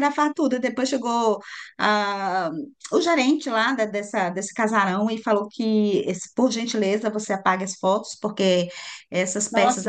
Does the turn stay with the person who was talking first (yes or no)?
yes